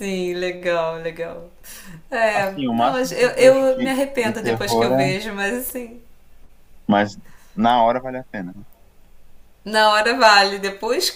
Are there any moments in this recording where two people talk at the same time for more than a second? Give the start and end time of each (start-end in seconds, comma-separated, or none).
2.3-5.0